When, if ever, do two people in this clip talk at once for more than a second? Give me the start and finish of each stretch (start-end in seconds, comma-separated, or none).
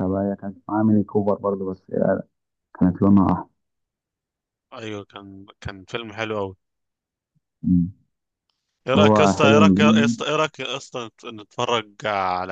8.9-10.3